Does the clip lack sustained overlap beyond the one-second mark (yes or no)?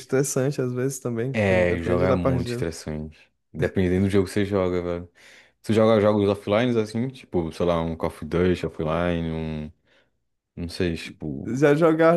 no